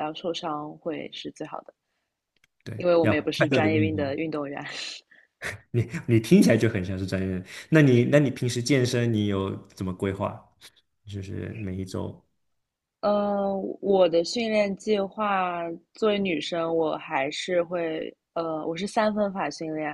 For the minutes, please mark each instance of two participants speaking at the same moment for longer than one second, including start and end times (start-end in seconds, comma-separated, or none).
2.7-4.2